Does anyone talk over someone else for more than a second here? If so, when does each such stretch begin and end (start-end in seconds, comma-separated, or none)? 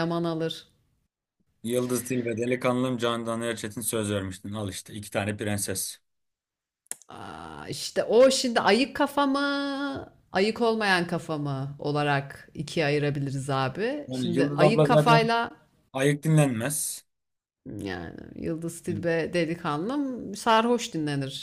14.1-15.3